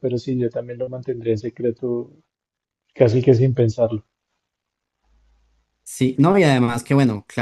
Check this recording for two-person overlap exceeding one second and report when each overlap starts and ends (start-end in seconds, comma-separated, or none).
none